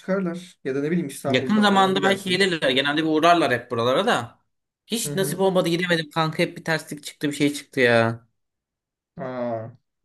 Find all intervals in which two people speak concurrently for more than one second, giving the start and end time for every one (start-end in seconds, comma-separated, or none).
1.3-2.5